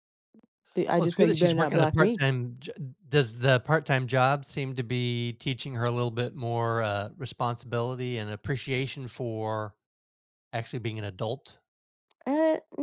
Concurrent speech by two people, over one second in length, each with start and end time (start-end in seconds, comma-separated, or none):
0.9-2.2